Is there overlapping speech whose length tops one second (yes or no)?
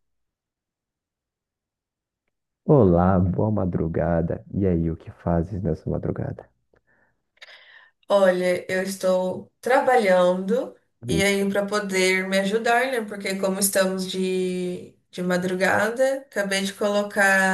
no